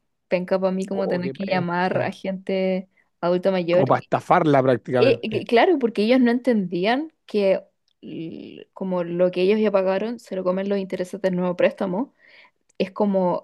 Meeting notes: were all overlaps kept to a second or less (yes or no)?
no